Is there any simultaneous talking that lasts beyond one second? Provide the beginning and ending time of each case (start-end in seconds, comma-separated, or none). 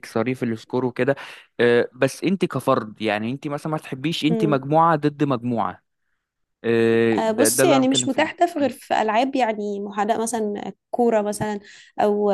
7.2-8.4